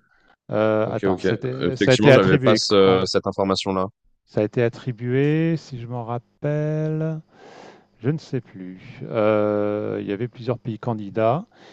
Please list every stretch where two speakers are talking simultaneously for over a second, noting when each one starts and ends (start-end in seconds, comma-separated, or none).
0.8-3.0